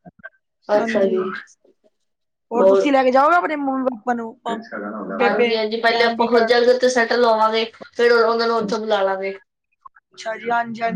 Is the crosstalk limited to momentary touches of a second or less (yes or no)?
yes